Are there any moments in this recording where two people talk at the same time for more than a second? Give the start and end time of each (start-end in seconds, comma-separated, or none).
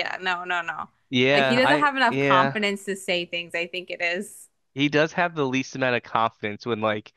1.3-2.6